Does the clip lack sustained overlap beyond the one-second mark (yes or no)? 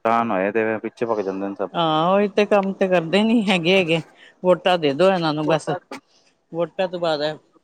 yes